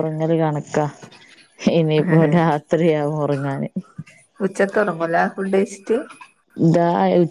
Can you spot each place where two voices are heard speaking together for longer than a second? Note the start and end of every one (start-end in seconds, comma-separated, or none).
none